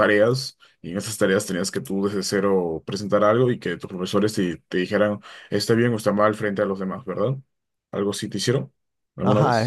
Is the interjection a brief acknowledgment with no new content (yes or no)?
no